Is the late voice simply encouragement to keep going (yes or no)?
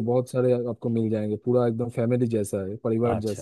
no